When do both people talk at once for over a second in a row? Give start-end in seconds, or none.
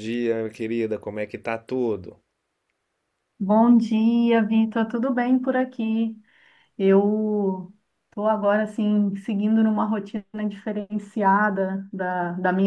none